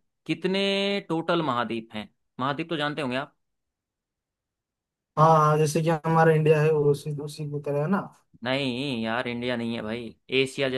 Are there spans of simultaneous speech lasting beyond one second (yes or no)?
no